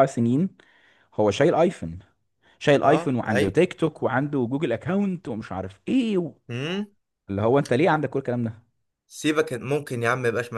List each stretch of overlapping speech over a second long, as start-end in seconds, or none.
none